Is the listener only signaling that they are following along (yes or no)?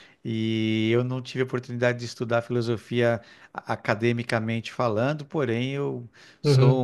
yes